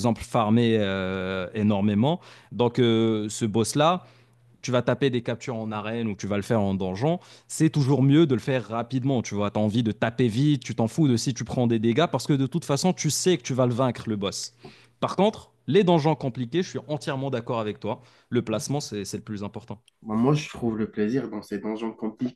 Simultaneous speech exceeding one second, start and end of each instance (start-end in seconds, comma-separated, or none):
none